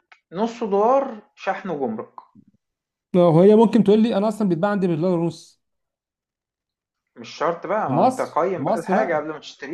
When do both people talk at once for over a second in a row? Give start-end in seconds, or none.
7.9-9.2